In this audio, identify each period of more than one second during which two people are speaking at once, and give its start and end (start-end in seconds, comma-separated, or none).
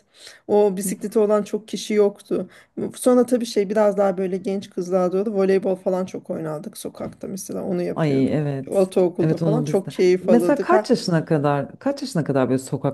8.0-10.7